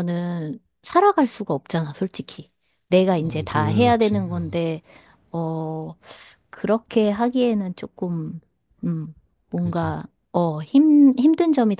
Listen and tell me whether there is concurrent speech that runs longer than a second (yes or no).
yes